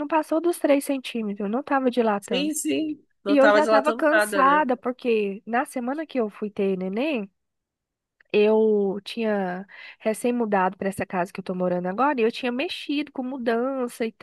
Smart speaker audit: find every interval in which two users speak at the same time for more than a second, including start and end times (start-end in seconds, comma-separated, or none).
3.3-4.7